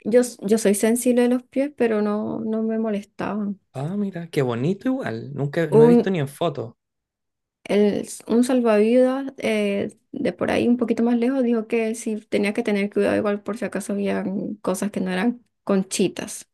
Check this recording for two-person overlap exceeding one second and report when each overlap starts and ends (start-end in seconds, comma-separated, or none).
none